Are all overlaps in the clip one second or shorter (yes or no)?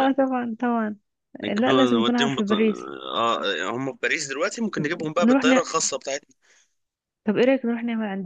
no